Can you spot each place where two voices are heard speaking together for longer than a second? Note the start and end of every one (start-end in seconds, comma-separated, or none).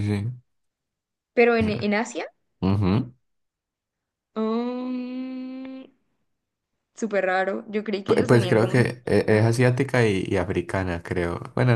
8.1-9.5